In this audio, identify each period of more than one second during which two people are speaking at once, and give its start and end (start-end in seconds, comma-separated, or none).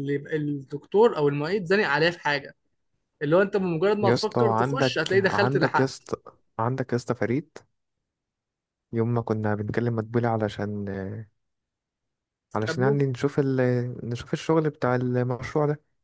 4.0-6.1